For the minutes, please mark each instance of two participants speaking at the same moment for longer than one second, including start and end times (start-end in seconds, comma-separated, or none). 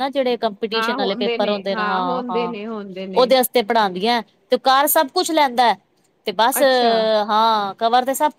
0.8-2.5